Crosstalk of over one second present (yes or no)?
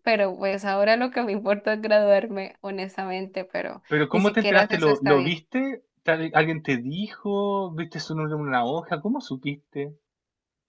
yes